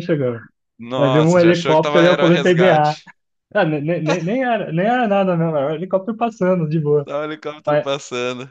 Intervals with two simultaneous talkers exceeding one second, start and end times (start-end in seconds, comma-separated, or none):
1.0-3.0